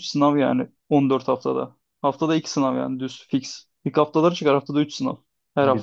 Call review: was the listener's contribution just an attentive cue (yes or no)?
no